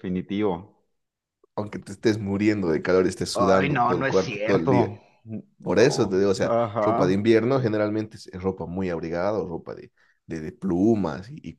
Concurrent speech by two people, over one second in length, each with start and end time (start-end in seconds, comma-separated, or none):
3.3-4.9, 5.6-7.3